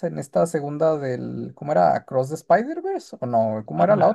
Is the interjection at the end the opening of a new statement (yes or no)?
yes